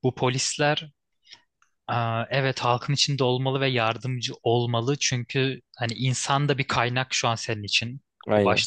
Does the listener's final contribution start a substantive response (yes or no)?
no